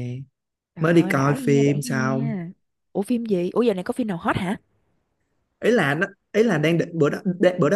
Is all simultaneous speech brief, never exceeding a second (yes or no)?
no